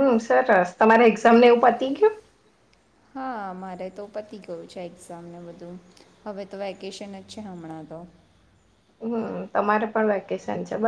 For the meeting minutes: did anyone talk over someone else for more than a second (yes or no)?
no